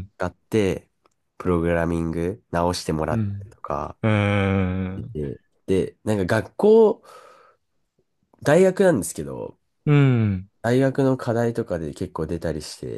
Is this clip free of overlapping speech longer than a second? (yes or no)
yes